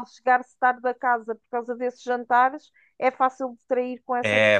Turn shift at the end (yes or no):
yes